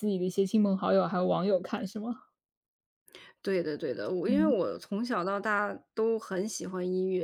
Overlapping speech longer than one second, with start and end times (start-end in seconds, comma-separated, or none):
none